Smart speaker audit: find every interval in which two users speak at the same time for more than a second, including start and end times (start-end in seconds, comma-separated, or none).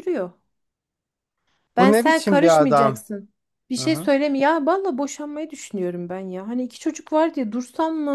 1.8-3.0